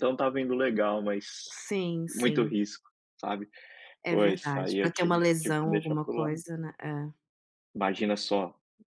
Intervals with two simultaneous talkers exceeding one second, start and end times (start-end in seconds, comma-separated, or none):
4.1-6.4